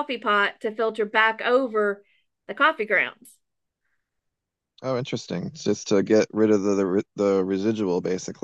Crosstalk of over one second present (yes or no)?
no